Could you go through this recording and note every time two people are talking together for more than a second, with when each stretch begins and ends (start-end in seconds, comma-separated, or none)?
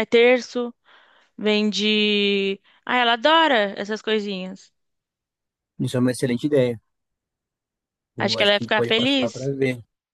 8.2-9.5